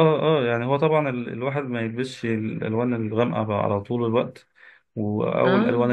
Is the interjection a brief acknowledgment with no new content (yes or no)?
yes